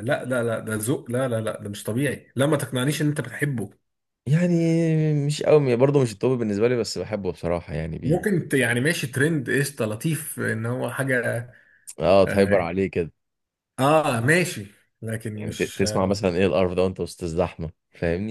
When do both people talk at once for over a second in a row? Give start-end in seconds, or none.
none